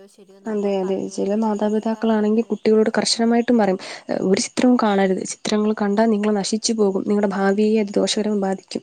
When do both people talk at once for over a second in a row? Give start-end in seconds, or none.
0.5-2.7